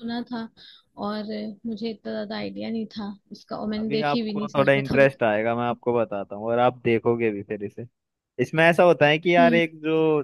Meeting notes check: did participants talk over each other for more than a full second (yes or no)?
yes